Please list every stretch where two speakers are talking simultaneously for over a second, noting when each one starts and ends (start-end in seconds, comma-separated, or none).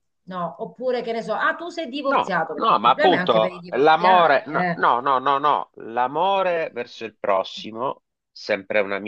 2.0-4.8